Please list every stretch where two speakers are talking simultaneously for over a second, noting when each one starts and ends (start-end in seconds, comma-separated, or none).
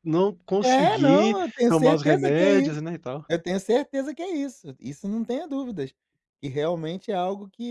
0.6-2.8